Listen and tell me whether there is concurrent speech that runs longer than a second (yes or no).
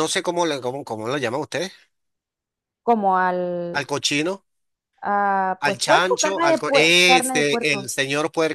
yes